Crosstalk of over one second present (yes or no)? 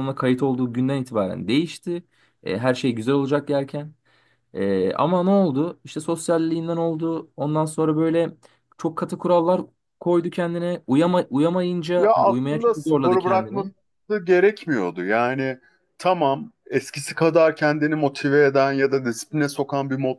yes